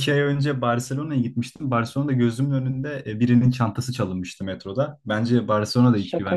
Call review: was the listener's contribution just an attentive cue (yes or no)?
no